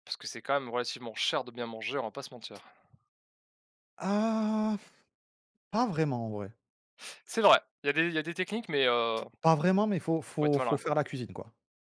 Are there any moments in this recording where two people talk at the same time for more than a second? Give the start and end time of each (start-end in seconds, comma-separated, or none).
none